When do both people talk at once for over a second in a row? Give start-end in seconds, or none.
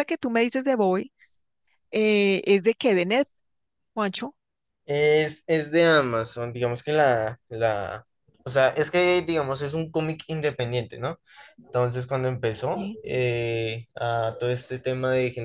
none